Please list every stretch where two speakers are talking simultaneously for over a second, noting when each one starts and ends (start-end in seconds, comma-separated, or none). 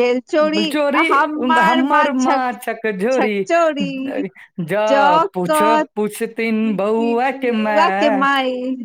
6.5-8.2